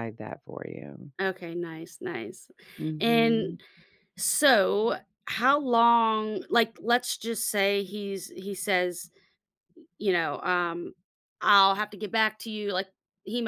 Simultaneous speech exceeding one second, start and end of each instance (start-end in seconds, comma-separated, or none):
none